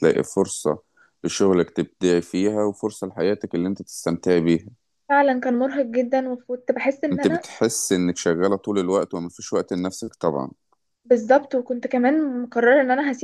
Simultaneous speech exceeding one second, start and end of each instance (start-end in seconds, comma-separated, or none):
none